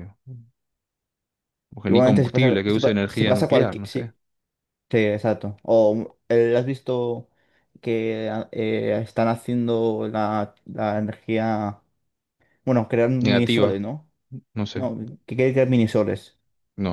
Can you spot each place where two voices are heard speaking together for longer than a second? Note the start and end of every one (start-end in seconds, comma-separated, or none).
1.9-4.1